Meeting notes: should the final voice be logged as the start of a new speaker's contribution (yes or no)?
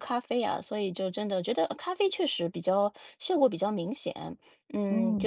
no